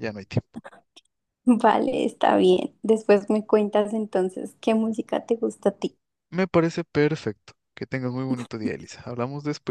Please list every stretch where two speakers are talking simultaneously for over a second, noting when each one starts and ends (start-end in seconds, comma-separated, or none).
none